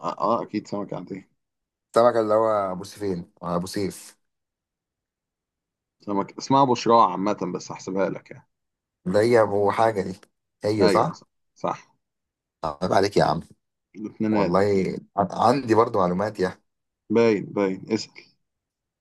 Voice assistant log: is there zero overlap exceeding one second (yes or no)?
yes